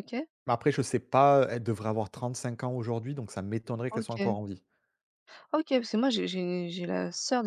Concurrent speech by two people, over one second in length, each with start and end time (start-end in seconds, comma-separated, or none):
none